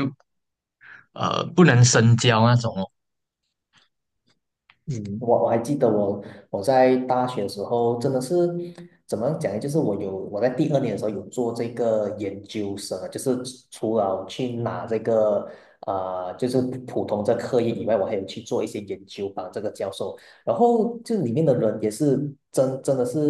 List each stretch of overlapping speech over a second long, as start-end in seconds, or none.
none